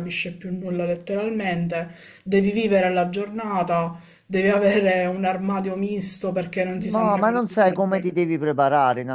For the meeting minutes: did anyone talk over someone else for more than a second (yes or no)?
yes